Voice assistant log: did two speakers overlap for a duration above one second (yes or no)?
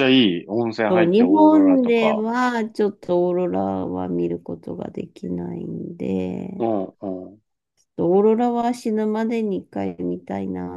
yes